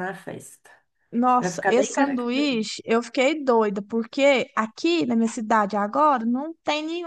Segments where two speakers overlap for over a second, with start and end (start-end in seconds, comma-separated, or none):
1.4-2.7